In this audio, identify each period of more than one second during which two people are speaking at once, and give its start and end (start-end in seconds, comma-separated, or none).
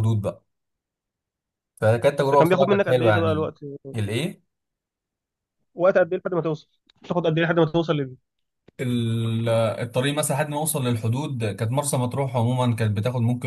2.3-3.5